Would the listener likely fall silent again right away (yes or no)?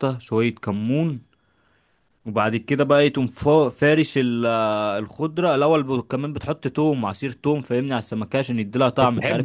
no